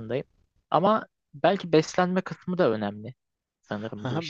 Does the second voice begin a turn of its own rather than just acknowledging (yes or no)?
yes